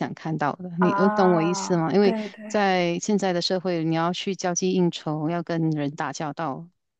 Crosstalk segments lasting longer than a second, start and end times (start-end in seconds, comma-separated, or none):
0.8-2.4